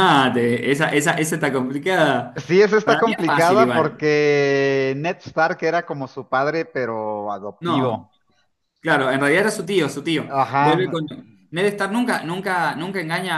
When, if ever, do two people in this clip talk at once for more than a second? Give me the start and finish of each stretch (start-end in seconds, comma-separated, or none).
2.8-4.1